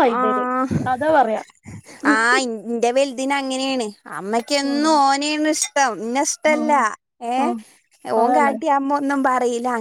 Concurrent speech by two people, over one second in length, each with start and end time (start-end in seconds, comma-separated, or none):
none